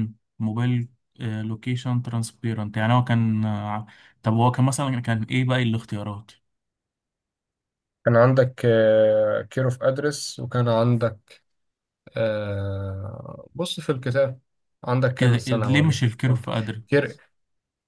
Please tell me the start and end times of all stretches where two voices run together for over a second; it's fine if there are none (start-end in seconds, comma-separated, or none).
15.2-16.4